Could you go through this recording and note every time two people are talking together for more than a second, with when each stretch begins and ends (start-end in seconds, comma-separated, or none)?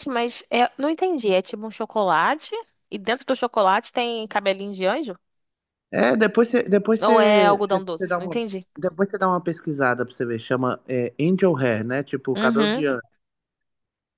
7.0-8.4